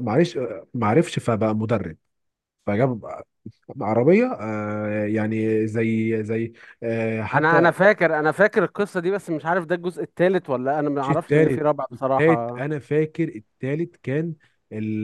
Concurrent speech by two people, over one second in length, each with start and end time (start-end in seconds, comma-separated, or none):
11.0-12.6